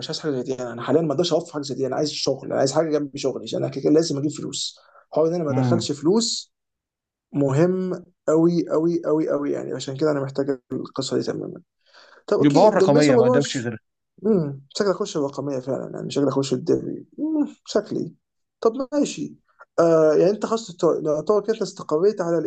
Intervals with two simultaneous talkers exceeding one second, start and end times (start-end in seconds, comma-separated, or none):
12.4-13.7